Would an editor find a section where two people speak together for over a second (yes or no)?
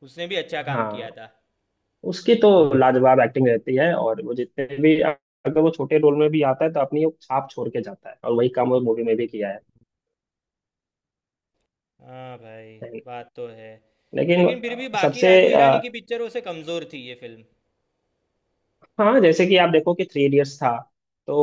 yes